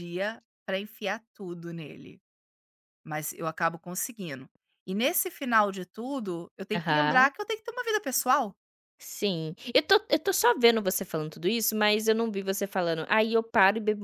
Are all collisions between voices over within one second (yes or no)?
yes